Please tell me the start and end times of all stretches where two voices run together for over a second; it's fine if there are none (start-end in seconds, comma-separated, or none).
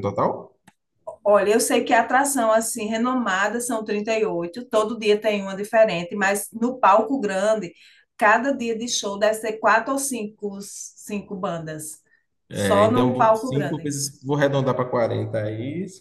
12.5-13.9